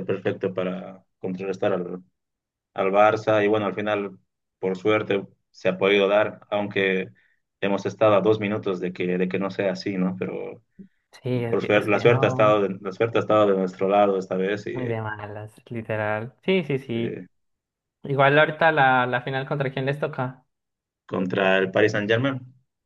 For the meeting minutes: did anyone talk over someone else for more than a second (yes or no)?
yes